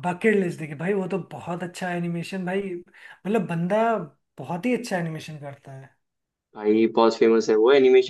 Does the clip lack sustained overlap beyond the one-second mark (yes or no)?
yes